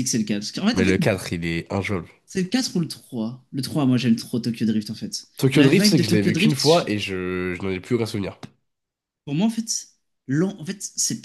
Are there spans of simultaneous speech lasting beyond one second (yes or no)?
yes